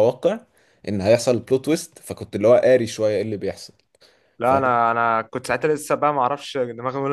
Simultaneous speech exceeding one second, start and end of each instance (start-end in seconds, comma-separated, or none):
none